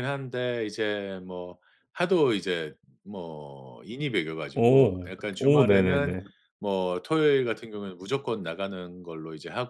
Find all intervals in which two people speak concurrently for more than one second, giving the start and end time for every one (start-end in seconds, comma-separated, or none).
4.5-6.2